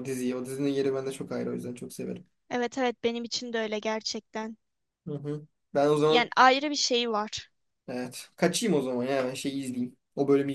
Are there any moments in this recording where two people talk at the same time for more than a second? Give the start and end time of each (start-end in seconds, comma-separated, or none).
none